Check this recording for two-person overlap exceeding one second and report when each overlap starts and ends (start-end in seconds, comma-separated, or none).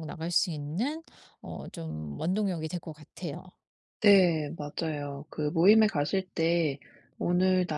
none